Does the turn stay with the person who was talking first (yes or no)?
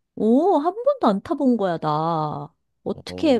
yes